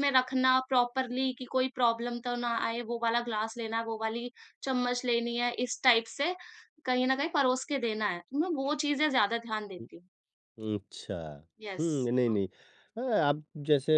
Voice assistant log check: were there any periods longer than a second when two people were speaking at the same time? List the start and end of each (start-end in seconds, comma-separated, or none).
none